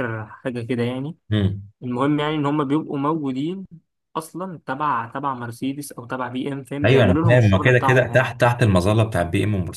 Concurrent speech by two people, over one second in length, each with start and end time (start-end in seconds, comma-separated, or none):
6.8-8.3